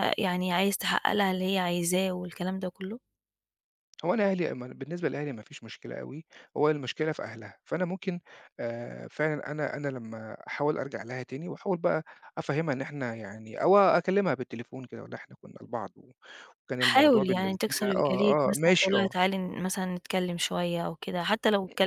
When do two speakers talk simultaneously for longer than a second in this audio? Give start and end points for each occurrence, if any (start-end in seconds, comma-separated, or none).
16.8-19.1